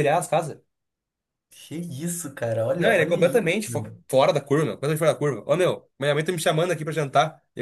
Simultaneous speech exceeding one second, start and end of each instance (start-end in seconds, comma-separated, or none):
2.7-4.0